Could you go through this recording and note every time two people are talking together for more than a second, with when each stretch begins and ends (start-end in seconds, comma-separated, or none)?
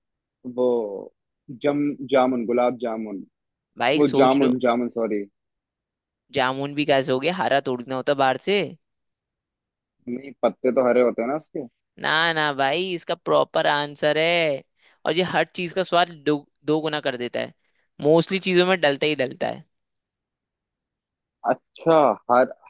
none